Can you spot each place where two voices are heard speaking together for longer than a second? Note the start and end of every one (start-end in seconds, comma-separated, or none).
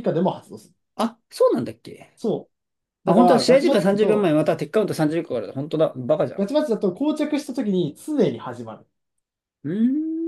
3.0-4.3